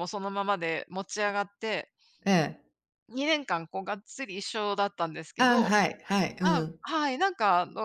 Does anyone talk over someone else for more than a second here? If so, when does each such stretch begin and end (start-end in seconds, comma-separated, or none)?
none